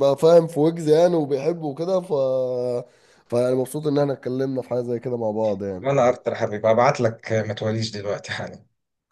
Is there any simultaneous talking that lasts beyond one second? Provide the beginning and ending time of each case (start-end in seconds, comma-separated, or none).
none